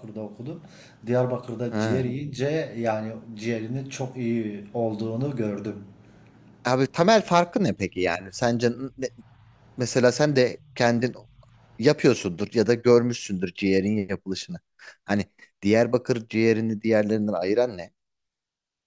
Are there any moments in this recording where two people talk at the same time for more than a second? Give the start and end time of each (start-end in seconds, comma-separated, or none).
none